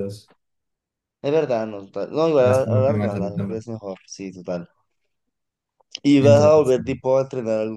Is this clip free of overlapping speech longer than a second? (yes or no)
no